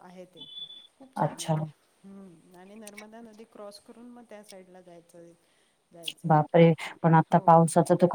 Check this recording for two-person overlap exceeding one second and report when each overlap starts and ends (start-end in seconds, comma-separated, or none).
none